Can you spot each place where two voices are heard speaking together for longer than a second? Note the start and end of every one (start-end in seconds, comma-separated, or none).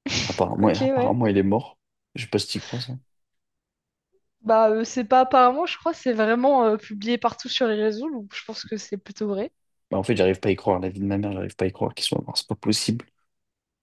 none